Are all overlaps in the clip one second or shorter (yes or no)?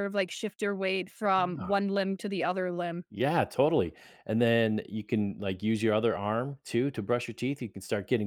yes